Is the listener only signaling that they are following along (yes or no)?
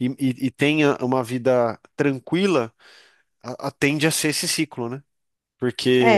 no